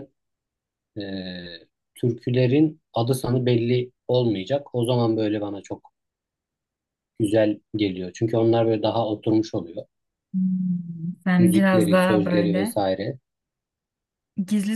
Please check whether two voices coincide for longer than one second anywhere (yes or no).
yes